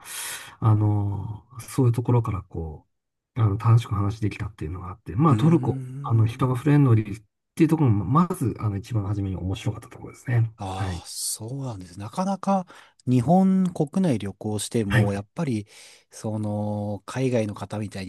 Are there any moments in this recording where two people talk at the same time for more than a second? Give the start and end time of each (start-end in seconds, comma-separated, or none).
5.3-6.6